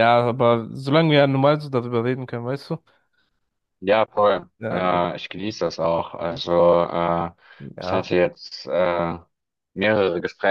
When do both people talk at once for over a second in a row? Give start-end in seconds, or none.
none